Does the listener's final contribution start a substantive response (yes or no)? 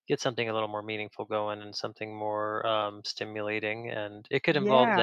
no